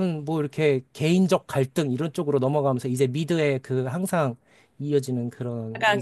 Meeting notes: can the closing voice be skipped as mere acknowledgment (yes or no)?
no